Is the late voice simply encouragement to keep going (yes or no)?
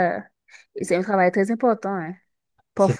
yes